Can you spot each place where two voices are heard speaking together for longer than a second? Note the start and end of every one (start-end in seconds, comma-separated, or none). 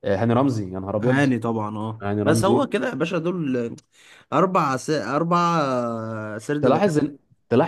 none